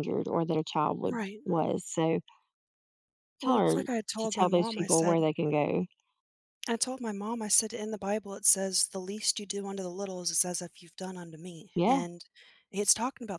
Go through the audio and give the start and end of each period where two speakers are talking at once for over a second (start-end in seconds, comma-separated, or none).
3.4-5.2